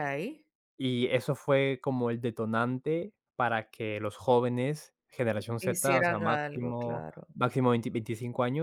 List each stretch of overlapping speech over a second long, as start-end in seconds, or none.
5.6-7.2